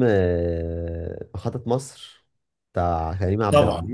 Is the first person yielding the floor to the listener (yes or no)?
yes